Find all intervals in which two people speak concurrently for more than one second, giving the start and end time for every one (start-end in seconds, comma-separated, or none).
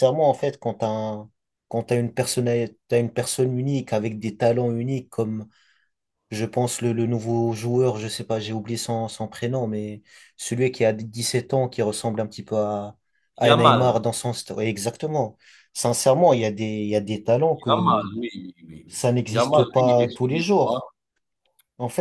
18.9-20.9